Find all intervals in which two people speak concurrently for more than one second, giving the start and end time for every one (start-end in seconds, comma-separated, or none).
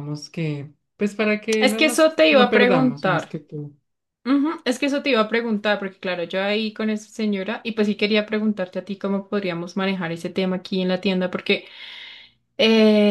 1.6-3.4